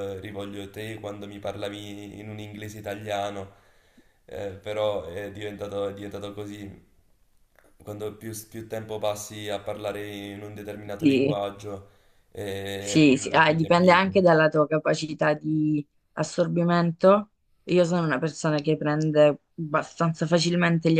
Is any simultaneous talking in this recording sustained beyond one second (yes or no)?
yes